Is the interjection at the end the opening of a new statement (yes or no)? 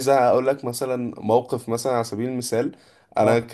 no